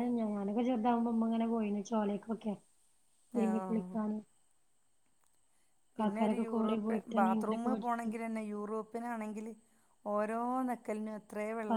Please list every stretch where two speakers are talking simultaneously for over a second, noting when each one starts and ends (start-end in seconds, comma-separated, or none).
6.5-8.0